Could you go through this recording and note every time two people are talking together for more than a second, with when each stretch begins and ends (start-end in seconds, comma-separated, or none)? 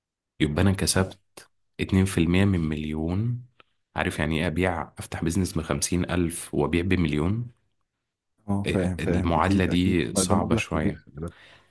8.7-11.0